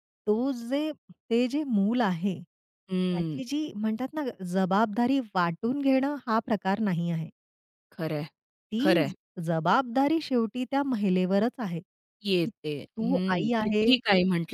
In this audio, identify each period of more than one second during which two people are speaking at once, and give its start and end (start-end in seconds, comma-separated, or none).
12.2-13.9